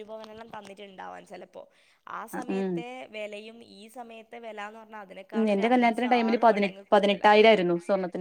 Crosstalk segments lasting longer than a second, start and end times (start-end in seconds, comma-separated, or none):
5.3-7.2